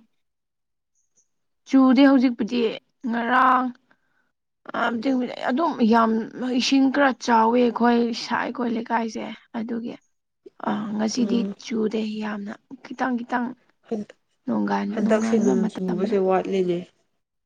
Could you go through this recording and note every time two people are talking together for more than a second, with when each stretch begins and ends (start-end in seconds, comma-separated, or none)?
14.9-16.2